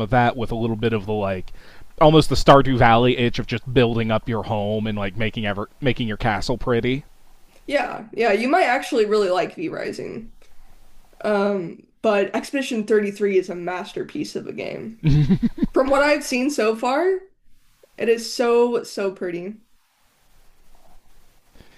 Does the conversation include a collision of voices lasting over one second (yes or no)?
no